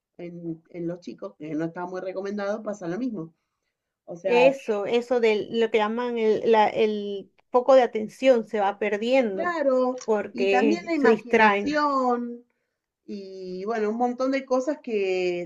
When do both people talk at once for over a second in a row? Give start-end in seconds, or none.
10.3-11.8